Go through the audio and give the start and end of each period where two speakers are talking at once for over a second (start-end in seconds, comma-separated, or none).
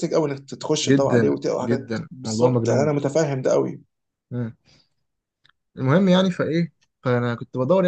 0.8-2.9